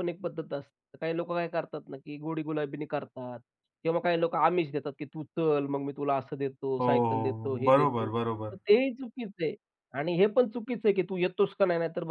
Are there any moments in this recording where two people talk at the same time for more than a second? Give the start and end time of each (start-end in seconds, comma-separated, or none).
6.8-8.6